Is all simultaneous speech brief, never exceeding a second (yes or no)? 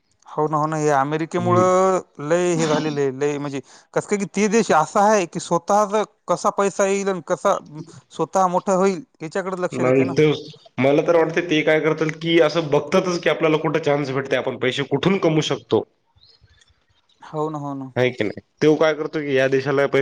yes